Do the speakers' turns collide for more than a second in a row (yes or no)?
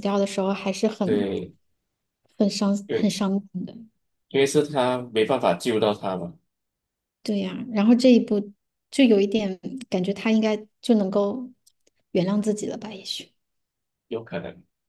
no